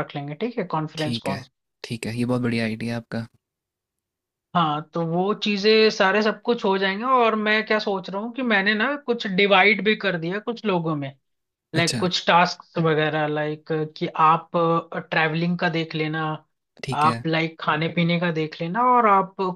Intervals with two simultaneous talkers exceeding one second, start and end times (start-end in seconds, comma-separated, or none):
none